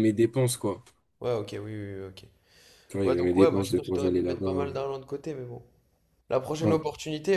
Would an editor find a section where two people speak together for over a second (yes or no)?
yes